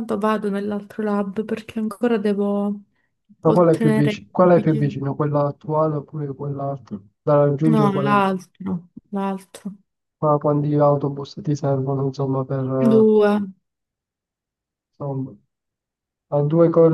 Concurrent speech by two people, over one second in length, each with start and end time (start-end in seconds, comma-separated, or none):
3.4-5.0